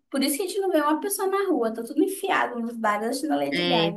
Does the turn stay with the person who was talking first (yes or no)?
no